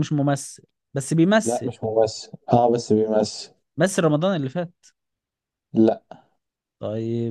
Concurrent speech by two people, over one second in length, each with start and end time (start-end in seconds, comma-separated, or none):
none